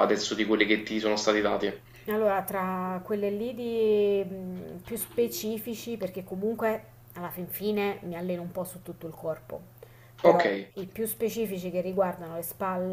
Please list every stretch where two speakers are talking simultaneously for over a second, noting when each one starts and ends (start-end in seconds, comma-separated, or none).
none